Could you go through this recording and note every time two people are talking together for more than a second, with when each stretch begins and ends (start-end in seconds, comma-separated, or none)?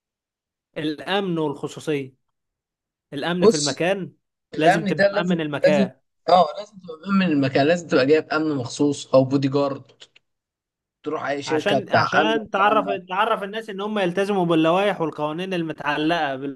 4.5-5.9, 11.4-13.0